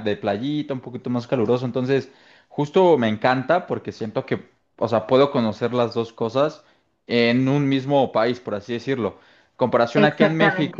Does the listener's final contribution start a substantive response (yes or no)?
no